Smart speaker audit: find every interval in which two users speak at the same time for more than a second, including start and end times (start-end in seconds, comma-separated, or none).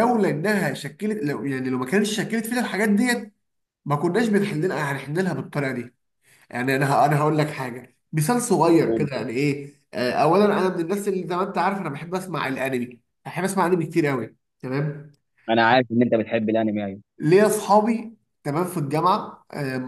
none